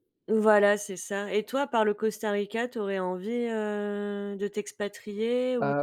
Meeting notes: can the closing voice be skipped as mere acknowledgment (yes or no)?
no